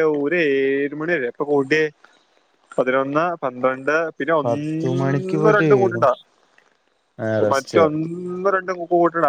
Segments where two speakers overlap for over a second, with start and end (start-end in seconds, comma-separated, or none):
4.5-6.0